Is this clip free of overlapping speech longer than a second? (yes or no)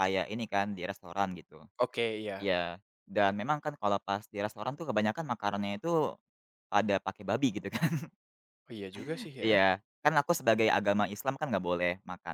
yes